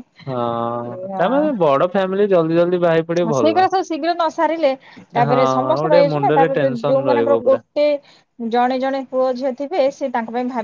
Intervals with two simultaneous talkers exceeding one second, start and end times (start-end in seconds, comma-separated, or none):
5.3-7.5